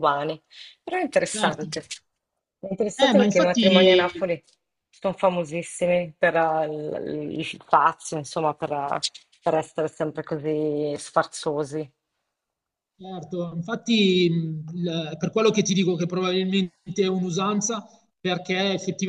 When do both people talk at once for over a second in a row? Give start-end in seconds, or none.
3.0-4.2